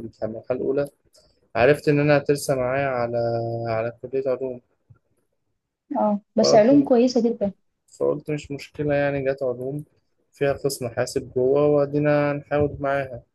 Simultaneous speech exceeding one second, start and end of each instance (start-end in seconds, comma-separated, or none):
none